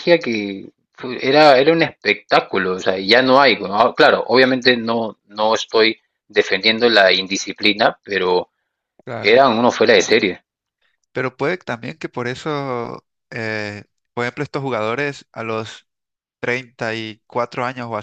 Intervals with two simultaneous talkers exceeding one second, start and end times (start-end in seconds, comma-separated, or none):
none